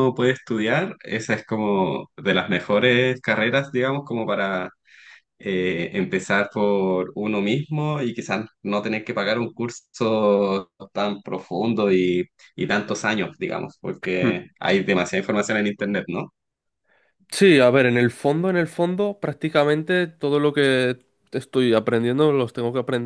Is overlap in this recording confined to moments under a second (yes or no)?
yes